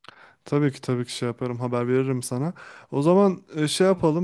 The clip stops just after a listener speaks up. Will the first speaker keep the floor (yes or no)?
yes